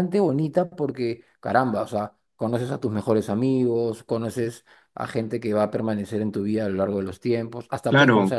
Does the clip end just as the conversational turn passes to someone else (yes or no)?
no